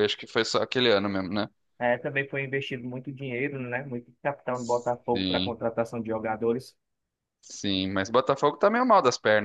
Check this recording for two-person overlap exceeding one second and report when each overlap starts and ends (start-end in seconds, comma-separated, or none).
none